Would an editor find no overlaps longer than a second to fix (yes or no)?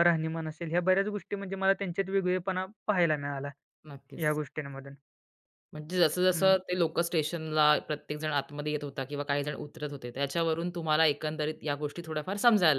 yes